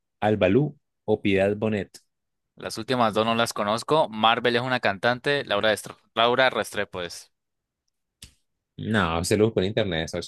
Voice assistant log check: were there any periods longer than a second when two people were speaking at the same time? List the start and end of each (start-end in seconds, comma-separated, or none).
none